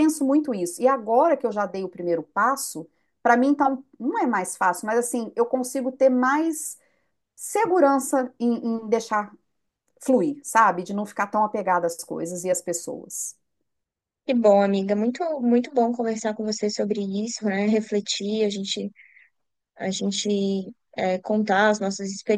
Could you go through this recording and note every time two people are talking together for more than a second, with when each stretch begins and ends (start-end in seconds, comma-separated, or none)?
none